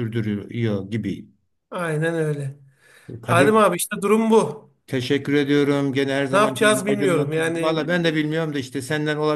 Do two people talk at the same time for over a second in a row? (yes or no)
yes